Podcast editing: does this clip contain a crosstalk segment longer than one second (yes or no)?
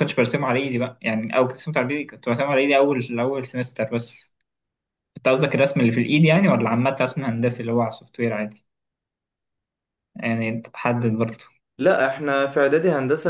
no